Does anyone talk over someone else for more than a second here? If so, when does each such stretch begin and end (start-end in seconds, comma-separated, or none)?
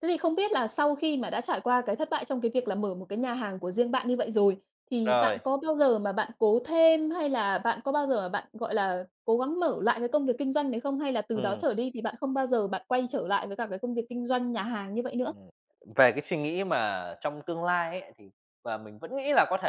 none